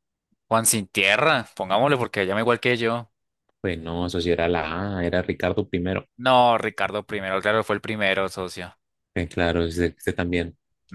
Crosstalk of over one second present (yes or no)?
no